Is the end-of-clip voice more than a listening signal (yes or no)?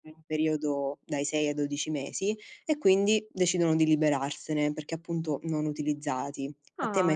yes